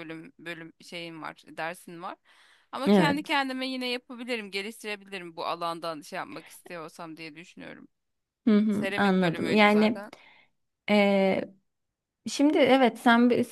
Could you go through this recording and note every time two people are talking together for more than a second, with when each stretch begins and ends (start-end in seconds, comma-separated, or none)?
8.7-10.1